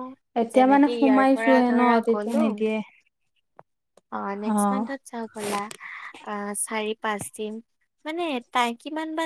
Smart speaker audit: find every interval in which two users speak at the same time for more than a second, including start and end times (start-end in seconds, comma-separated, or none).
0.5-2.4